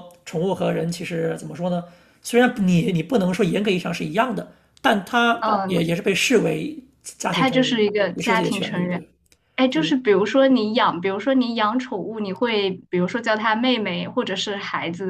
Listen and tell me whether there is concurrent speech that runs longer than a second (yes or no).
yes